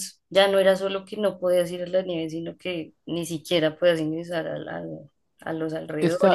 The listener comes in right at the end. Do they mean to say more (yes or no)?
yes